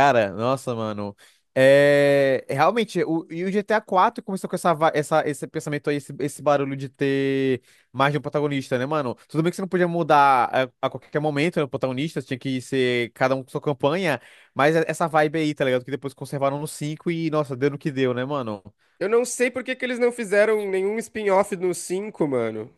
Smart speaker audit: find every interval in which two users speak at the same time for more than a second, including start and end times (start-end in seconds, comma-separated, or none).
none